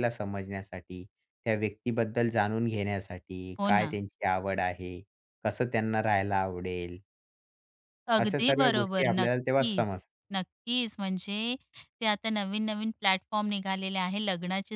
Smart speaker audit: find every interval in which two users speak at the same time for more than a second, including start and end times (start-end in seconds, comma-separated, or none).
8.2-10.0